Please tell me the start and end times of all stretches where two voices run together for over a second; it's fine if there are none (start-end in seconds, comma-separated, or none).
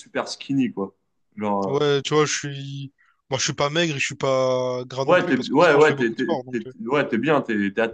5.1-6.7